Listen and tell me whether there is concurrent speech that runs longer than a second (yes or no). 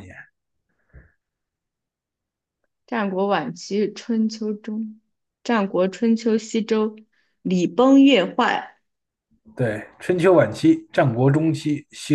no